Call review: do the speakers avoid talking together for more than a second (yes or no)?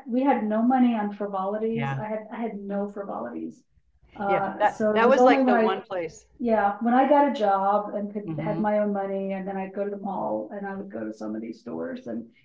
no